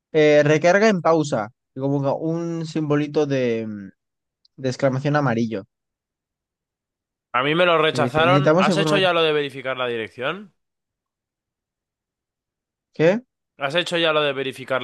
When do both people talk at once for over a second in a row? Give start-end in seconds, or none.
7.9-9.1